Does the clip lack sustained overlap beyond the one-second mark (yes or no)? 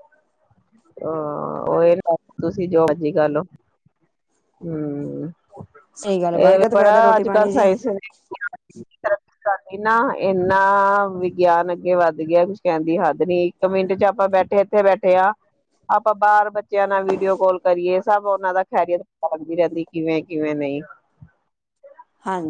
no